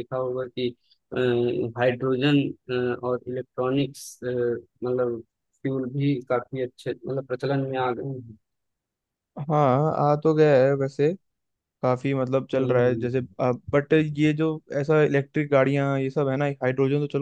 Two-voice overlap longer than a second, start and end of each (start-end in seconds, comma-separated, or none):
none